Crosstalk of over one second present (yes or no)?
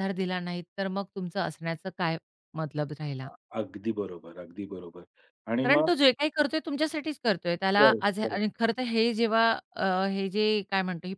no